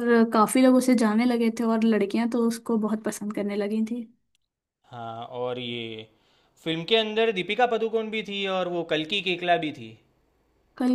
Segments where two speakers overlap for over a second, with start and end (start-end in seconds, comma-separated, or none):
none